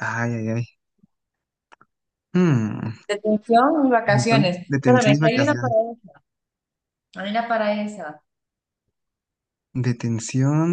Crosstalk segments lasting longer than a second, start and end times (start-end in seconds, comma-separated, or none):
4.0-5.7